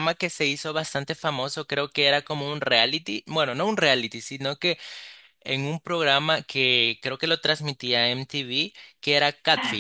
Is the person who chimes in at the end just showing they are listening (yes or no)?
no